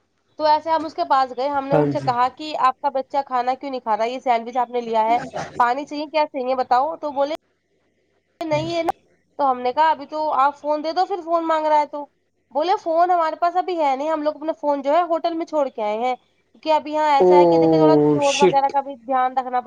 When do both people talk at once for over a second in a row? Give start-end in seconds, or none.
17.2-18.7